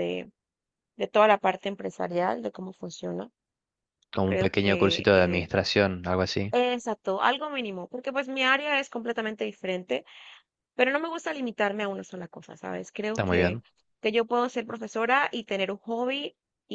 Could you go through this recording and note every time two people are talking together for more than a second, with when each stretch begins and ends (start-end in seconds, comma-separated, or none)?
4.2-5.5